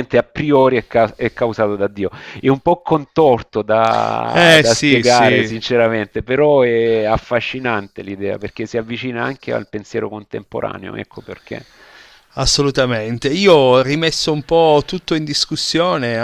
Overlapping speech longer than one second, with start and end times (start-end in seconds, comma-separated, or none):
4.3-5.5